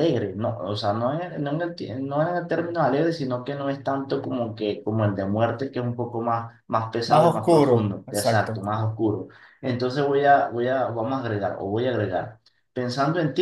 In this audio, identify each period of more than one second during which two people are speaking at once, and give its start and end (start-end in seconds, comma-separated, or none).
7.1-8.6